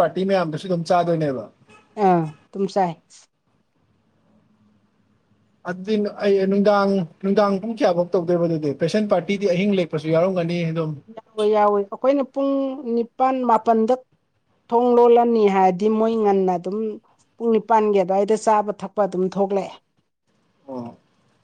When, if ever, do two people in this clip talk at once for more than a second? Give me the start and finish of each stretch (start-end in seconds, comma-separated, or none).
none